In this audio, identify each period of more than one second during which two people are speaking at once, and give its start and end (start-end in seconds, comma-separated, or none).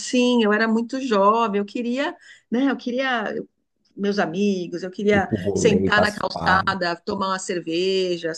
5.1-6.8